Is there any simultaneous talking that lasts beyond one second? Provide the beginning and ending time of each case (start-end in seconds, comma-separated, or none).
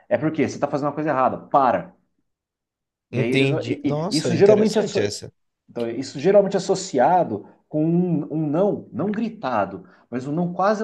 3.1-4.8